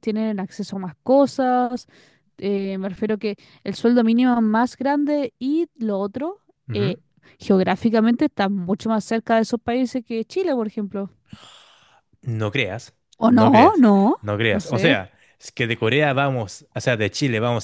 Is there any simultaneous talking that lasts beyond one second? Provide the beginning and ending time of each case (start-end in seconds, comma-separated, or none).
13.2-15.1